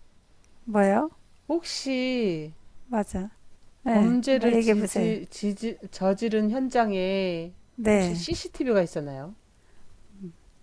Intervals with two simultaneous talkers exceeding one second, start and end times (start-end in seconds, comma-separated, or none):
3.9-5.2